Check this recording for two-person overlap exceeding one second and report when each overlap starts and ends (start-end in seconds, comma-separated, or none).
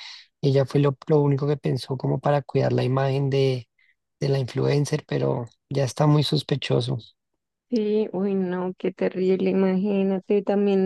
none